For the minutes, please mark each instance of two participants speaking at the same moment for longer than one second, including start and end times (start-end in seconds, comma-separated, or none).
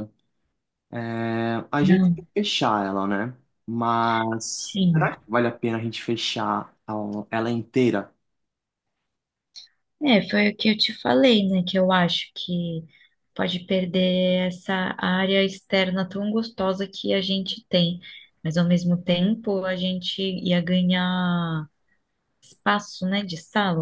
none